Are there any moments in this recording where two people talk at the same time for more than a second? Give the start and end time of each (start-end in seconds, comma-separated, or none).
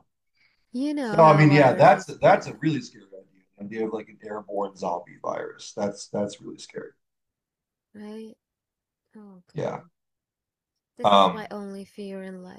1.0-2.6